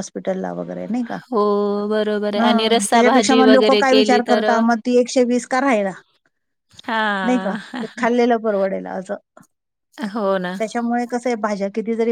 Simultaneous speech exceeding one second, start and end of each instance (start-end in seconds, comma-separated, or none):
2.4-4.6